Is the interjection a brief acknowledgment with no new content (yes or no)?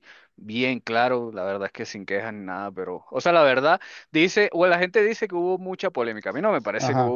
no